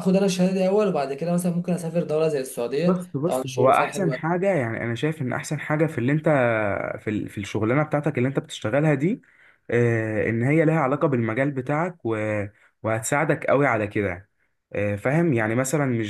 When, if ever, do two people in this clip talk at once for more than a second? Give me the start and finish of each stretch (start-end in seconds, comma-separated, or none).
2.9-4.4